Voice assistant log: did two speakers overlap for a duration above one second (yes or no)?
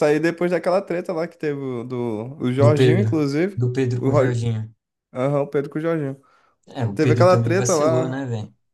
yes